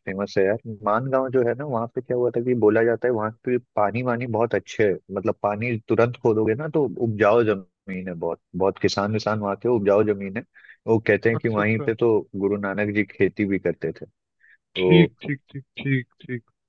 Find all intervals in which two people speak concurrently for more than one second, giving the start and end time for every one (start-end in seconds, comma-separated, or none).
none